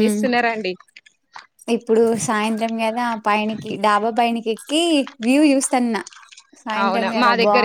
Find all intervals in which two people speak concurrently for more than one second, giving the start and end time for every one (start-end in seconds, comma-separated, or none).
none